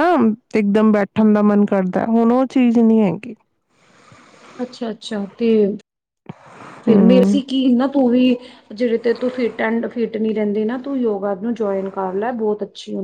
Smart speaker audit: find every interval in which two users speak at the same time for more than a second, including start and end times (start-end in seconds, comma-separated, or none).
none